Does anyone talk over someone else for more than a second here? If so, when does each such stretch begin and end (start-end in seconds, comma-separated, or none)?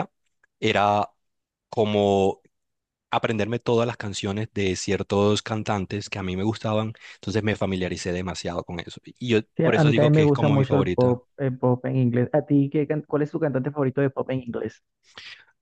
9.6-11.2